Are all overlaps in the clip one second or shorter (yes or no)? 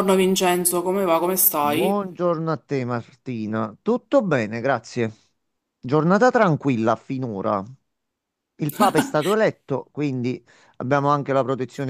yes